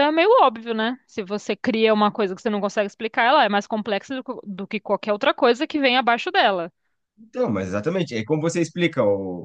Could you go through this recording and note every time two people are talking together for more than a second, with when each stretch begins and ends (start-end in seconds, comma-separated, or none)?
none